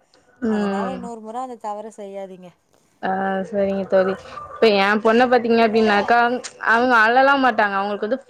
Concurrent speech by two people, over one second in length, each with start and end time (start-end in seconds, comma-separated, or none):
none